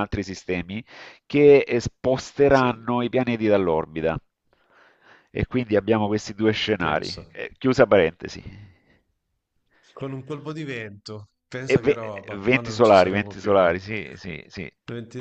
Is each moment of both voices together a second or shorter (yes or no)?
no